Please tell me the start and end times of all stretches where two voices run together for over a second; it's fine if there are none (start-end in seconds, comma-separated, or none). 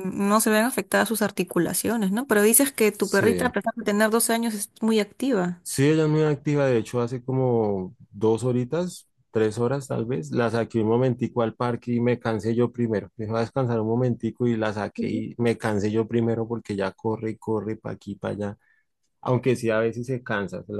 none